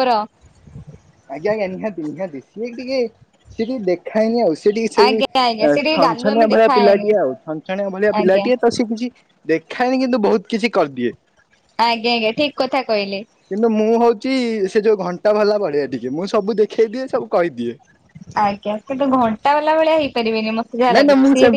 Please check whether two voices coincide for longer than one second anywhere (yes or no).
yes